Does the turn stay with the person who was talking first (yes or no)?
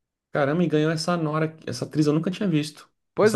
no